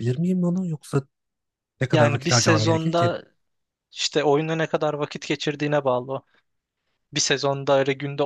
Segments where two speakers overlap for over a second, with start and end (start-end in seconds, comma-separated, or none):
1.9-3.1